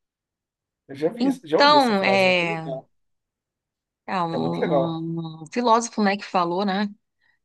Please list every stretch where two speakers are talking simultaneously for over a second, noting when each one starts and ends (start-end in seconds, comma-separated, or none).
1.2-2.7